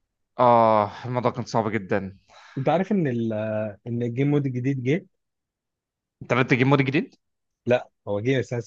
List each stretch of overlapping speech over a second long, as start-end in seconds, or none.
none